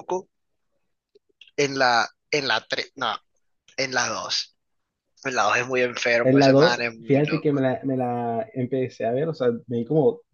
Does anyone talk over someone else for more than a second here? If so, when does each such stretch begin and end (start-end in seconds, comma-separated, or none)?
6.2-7.6